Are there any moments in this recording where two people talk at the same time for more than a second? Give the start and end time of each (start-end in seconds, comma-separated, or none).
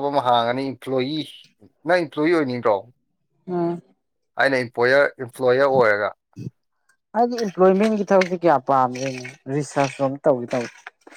none